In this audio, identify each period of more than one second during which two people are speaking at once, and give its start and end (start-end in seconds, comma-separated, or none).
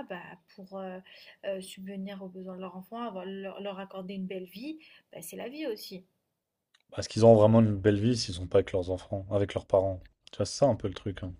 none